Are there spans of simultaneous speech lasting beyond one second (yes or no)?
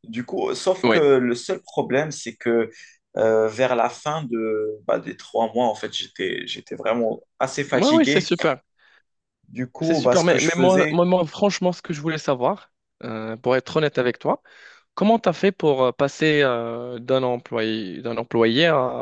yes